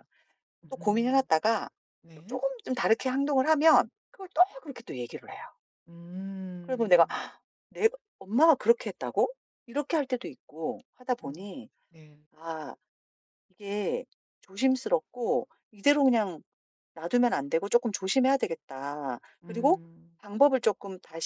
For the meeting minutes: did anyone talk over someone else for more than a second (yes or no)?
no